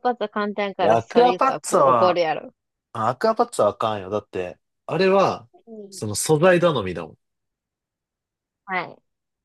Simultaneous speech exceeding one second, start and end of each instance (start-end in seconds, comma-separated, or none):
0.8-2.2